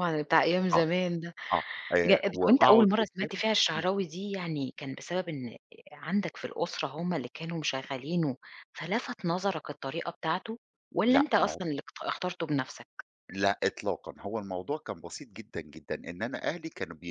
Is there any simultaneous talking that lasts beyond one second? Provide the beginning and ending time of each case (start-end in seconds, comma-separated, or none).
2.0-3.9